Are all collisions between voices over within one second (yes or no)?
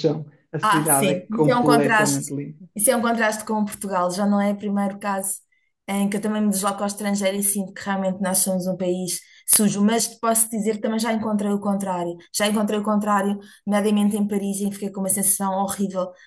no